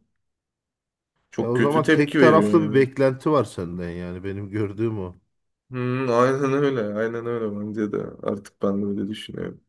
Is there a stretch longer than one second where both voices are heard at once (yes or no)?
yes